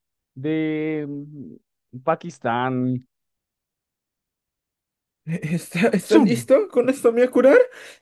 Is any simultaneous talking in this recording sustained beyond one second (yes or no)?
no